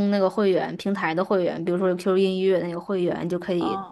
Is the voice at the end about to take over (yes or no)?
no